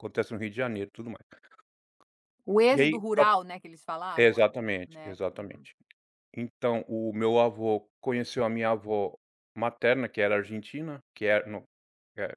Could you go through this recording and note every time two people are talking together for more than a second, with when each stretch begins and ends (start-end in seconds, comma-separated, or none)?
4.2-5.7